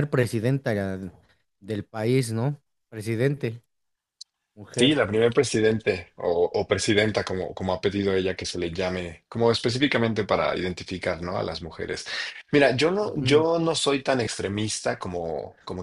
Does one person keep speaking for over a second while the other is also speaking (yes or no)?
no